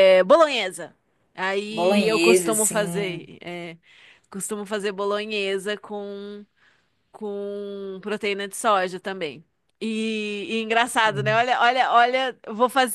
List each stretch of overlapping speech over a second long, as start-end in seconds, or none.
1.7-3.3